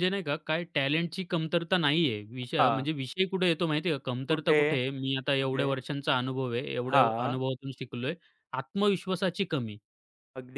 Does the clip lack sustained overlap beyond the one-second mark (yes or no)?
yes